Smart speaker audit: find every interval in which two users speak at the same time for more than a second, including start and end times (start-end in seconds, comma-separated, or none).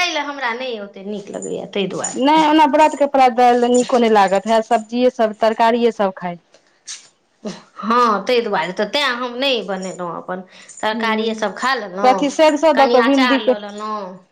none